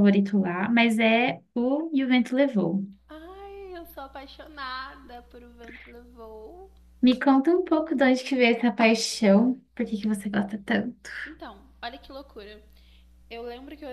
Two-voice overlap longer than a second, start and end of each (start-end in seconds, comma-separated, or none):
none